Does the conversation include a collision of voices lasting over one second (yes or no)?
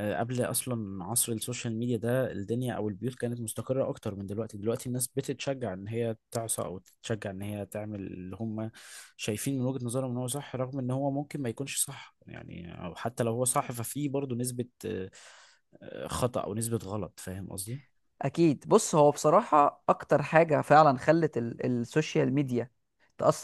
no